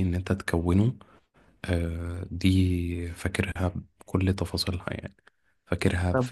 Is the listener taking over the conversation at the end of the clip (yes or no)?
yes